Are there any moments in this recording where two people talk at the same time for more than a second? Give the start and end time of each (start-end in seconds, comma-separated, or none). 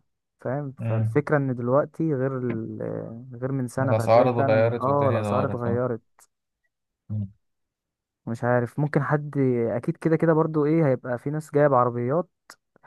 3.8-5.8